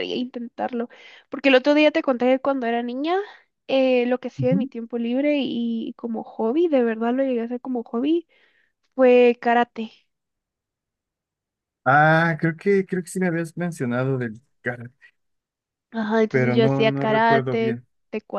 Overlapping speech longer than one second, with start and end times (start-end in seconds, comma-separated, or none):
16.3-17.9